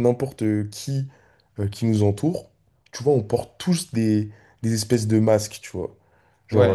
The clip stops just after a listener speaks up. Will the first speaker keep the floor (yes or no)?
yes